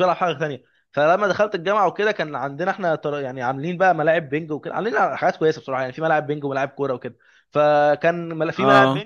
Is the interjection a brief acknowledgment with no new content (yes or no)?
yes